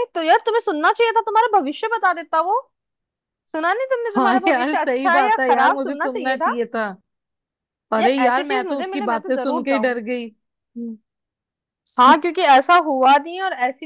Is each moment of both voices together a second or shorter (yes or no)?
no